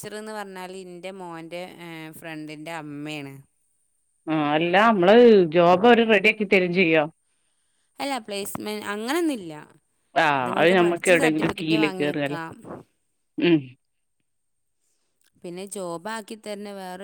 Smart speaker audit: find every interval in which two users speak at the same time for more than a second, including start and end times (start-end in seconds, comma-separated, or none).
10.4-12.4